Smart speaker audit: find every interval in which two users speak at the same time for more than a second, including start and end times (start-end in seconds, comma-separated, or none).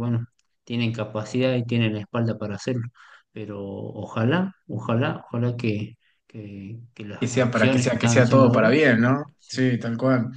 7.2-8.7